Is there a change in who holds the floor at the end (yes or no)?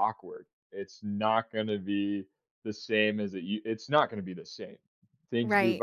yes